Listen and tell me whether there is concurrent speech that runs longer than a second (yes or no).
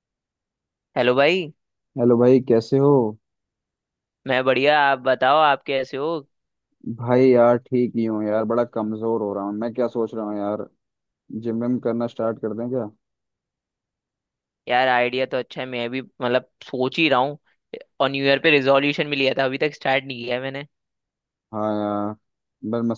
no